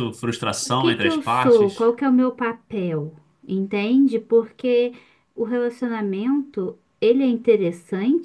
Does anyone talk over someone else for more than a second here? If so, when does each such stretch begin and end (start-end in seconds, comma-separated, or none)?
0.6-1.9